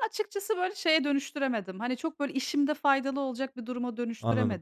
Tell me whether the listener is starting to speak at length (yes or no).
yes